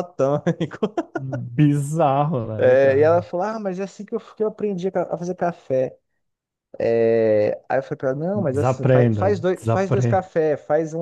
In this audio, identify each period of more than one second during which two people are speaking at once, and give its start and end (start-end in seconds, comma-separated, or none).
8.5-10.2